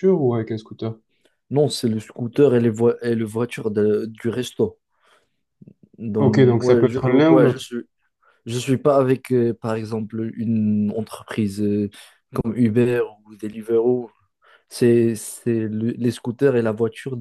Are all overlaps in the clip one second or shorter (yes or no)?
no